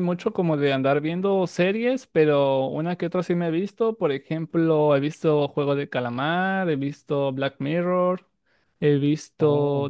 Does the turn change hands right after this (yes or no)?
no